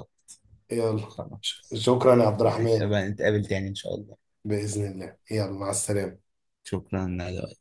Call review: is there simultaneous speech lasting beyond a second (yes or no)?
no